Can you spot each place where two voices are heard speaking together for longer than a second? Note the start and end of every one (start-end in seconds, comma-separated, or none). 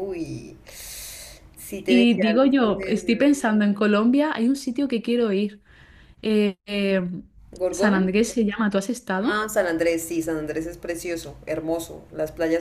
1.9-3.3